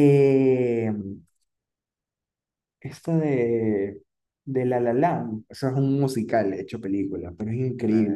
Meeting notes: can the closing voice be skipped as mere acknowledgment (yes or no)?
no